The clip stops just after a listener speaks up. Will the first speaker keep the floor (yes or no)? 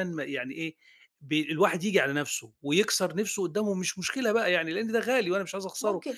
no